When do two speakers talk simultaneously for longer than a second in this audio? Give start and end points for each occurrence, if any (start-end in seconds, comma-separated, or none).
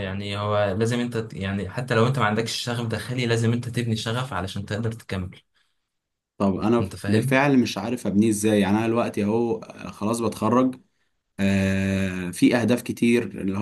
none